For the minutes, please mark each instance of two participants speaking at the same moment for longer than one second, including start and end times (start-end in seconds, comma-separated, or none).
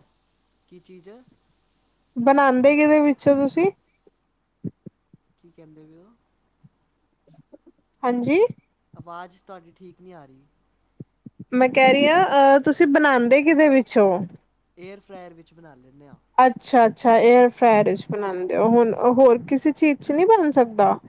none